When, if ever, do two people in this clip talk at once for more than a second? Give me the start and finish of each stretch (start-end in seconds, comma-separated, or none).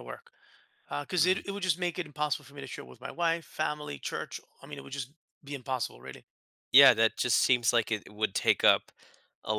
none